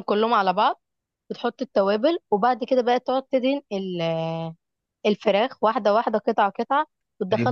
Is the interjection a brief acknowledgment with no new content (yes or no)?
no